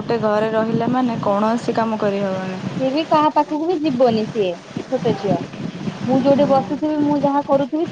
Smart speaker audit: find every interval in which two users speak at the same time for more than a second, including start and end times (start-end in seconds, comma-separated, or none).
none